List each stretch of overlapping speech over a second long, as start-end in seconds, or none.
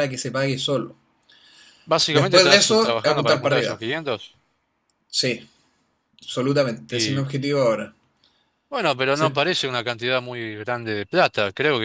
2.1-3.8